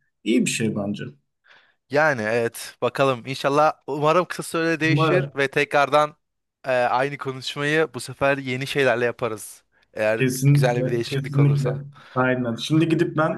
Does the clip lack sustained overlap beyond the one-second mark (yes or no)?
no